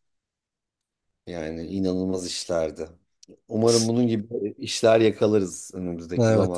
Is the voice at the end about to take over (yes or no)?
yes